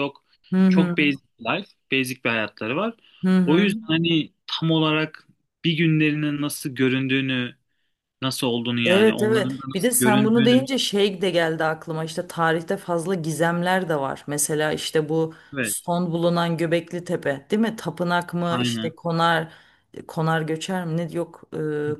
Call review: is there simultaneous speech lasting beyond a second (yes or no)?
yes